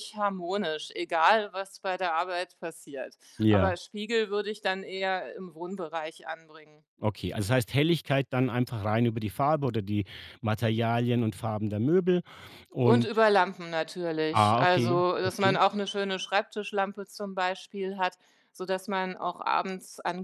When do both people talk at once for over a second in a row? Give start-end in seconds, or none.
14.3-15.6